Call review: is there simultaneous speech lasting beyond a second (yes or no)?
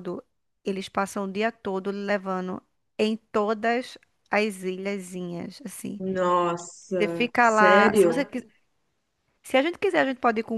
yes